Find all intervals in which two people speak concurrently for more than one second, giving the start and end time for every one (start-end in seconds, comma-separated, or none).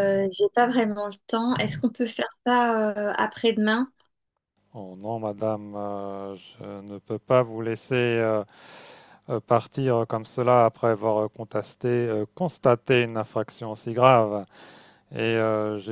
none